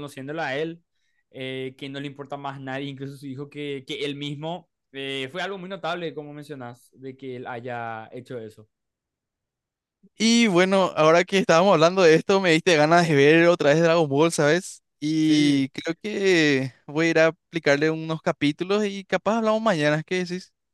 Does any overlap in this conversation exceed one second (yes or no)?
no